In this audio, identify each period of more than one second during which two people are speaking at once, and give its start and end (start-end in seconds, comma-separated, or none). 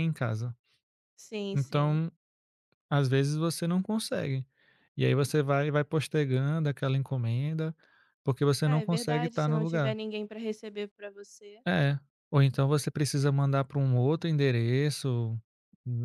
8.6-9.9